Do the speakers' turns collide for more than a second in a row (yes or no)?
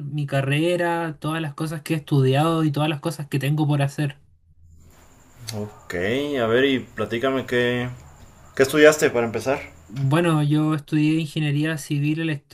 no